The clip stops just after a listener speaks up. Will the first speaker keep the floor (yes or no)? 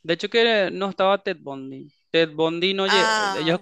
yes